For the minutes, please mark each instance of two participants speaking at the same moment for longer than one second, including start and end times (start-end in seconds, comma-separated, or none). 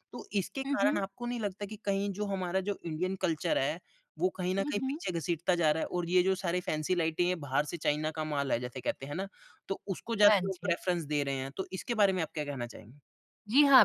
none